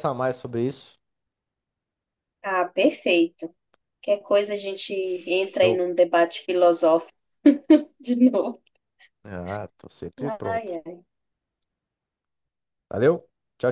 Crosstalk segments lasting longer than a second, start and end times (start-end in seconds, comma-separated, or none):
none